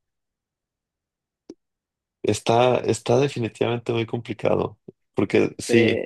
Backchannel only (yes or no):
yes